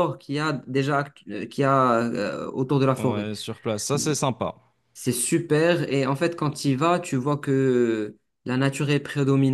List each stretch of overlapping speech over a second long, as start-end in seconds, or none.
none